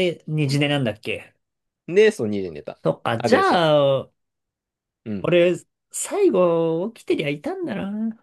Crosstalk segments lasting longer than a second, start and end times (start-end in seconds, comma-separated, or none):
none